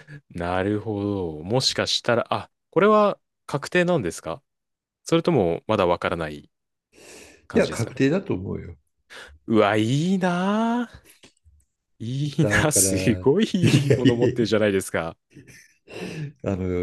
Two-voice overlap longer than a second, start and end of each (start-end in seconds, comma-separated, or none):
12.4-14.5